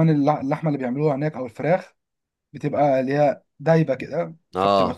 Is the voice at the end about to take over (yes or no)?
no